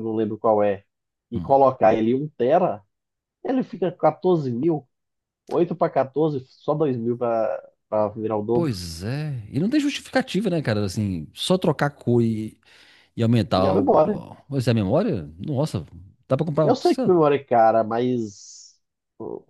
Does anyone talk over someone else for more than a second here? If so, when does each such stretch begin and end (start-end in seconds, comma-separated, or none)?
none